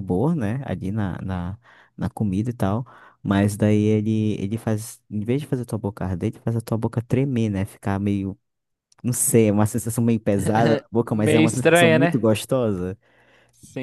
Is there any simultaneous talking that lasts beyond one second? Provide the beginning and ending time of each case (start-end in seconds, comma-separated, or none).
11.1-12.3